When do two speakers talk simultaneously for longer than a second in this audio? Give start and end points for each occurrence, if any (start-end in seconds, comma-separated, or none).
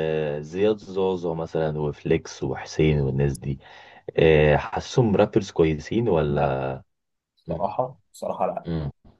none